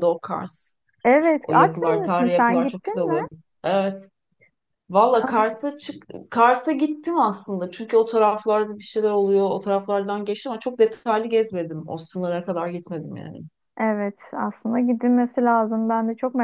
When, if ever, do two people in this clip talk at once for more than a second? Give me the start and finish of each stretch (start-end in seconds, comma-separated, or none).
1.4-3.2